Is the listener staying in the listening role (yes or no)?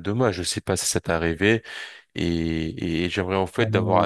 yes